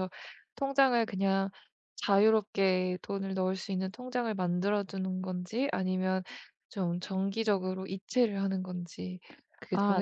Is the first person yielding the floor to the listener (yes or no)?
yes